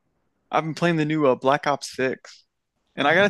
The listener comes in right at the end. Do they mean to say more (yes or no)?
no